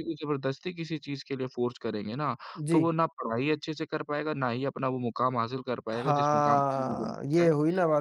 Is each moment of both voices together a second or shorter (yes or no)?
no